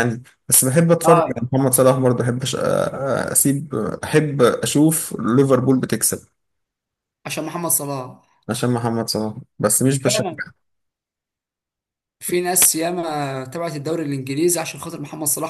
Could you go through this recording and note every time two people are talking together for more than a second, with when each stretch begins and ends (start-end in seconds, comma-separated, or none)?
none